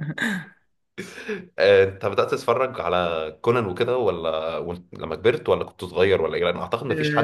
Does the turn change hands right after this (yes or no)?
yes